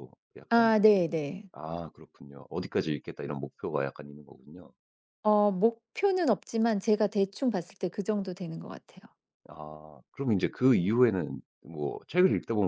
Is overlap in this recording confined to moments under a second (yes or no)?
yes